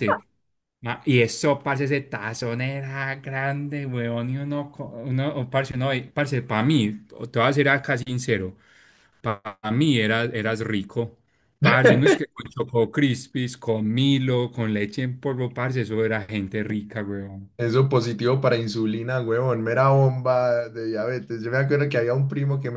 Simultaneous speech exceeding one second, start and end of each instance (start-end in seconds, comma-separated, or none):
none